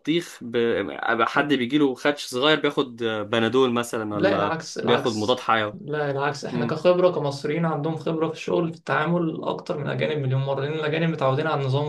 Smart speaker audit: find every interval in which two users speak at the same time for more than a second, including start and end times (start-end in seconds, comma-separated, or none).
4.1-5.8